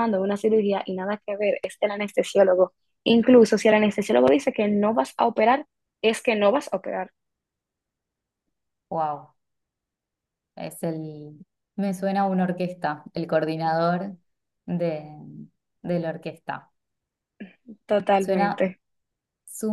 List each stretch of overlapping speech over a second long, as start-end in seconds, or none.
none